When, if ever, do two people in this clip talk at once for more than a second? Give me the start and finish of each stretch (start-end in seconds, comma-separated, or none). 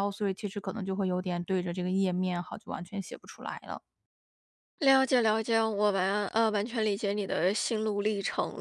none